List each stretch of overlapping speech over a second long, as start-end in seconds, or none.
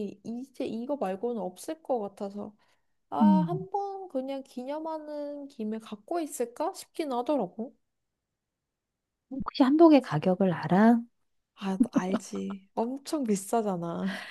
none